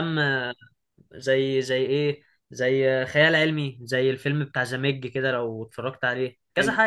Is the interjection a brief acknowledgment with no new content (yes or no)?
no